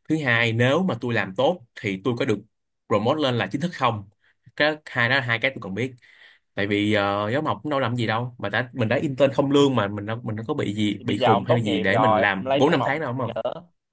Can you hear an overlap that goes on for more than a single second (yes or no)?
yes